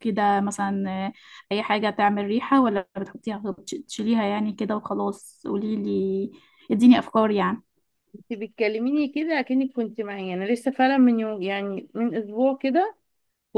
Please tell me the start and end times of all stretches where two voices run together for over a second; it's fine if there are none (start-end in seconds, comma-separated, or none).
none